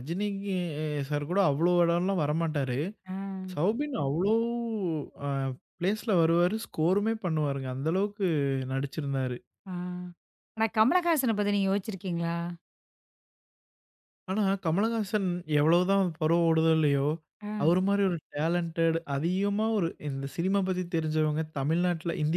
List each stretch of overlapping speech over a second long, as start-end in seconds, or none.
none